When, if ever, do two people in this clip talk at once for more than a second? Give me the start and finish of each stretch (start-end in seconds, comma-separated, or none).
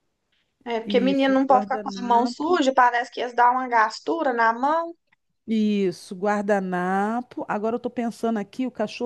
0.8-2.6